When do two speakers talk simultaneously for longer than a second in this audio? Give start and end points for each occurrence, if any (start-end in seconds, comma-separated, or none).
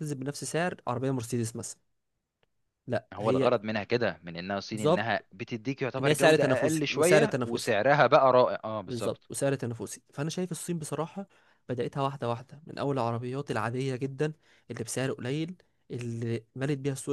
6.0-7.7